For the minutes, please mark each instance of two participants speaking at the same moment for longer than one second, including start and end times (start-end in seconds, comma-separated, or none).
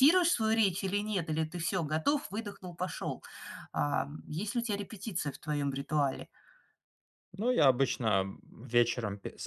none